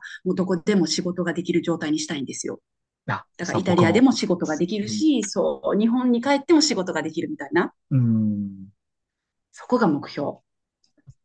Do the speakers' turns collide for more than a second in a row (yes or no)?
yes